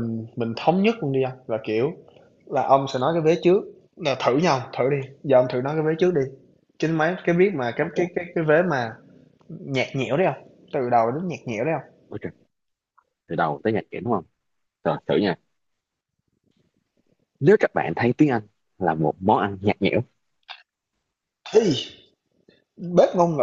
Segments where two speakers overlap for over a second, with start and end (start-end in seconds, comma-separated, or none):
none